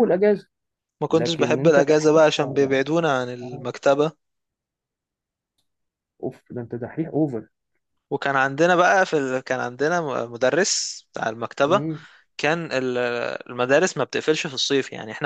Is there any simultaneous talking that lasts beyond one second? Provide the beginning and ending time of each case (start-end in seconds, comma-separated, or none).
1.1-2.9